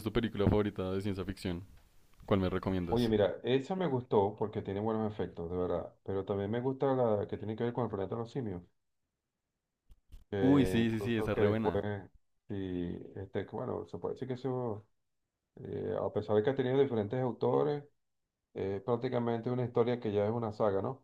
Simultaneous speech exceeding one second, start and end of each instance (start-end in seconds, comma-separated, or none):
10.4-11.8